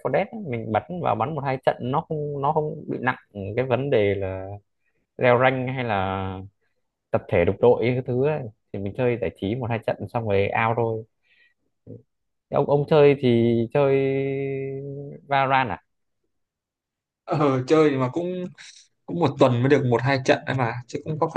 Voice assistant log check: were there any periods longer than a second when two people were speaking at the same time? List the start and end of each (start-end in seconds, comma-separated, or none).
none